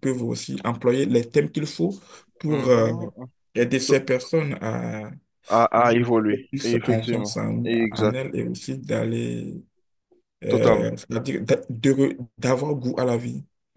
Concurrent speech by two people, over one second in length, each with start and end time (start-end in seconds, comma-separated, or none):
5.5-8.2